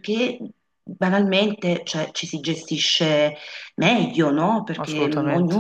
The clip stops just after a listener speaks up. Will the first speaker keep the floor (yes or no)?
yes